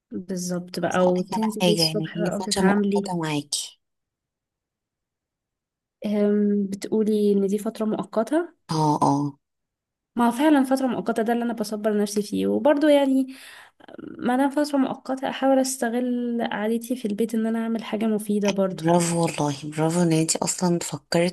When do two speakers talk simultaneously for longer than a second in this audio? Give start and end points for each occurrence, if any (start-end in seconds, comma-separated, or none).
0.8-3.1